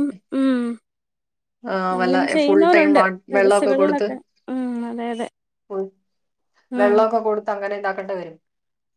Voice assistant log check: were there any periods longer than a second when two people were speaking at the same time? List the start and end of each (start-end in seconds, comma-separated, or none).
2.0-4.1